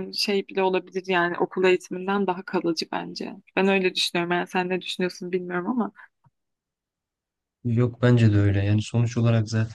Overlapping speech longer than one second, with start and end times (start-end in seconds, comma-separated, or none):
none